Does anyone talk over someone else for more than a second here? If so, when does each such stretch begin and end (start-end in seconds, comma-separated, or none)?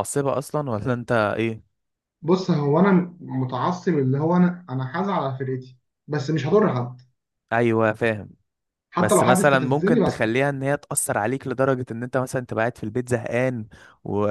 9.0-10.5